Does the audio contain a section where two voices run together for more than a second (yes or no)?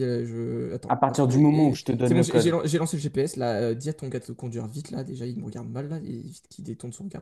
yes